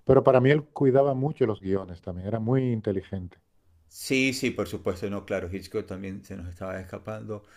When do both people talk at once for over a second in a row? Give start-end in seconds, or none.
none